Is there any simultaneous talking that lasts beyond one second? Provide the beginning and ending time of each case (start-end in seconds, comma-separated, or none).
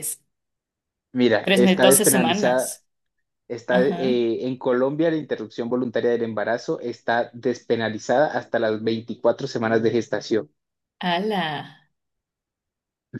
1.4-2.8